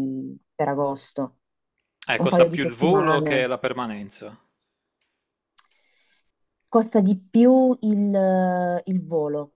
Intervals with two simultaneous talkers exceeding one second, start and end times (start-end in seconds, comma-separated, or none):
2.1-3.5